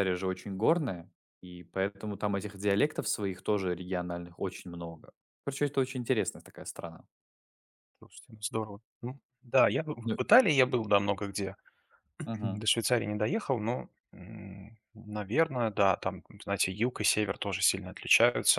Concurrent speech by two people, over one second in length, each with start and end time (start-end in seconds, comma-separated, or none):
none